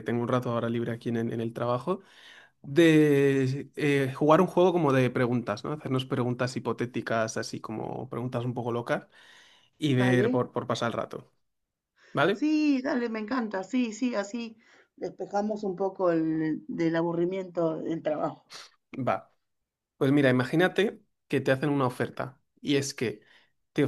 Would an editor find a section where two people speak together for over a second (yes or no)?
no